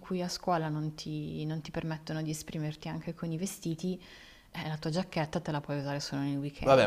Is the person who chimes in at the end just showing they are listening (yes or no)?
no